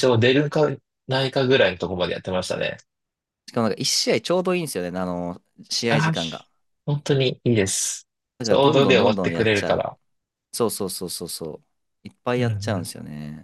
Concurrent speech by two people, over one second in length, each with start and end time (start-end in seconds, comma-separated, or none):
8.4-9.9